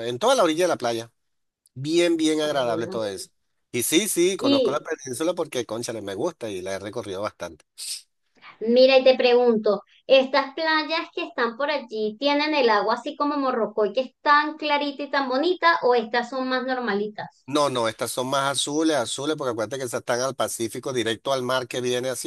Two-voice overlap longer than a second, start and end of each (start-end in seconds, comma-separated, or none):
none